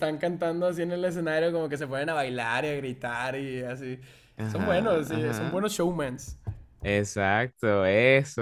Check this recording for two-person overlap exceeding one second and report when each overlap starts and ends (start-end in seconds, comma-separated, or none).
4.5-5.7